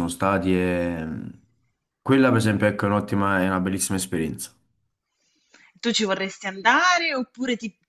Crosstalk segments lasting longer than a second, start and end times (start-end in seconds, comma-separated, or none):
none